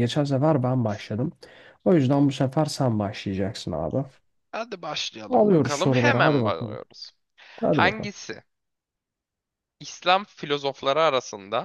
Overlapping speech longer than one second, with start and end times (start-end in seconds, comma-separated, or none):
5.3-6.8